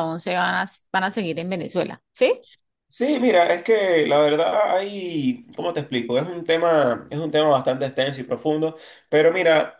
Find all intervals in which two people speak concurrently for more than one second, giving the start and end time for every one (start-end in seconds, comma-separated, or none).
none